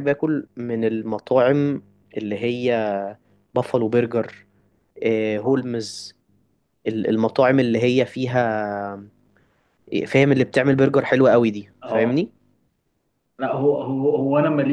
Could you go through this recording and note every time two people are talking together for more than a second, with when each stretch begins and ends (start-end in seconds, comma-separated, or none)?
none